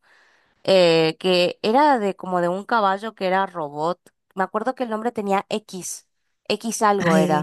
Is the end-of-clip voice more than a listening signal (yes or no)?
yes